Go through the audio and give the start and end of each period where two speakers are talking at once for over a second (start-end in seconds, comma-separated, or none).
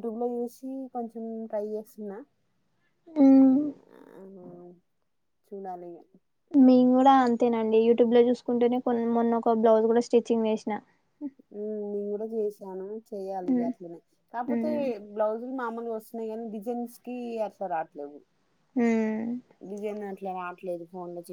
none